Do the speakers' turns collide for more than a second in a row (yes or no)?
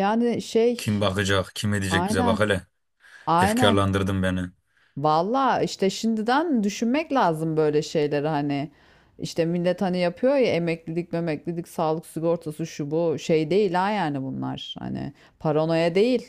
no